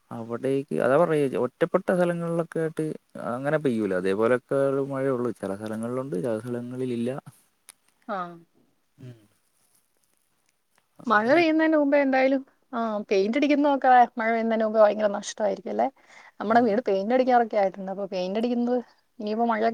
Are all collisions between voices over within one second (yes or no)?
yes